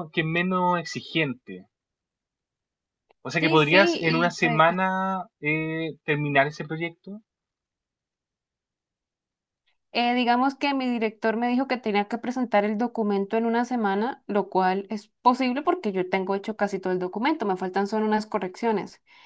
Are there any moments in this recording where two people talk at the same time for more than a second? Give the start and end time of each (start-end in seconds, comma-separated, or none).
3.4-4.6